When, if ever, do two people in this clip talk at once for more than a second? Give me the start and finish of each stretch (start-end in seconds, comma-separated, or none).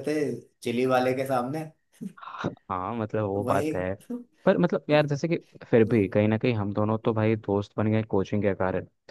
none